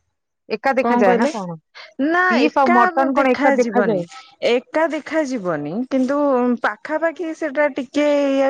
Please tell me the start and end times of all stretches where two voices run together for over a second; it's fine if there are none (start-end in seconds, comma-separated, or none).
2.3-4.0